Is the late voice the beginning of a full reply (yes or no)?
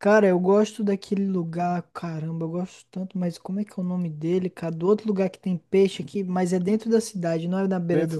yes